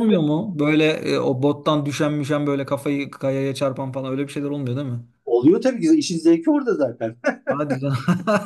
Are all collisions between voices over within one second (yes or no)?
yes